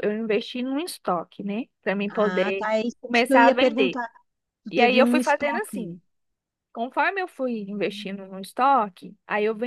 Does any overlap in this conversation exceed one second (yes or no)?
yes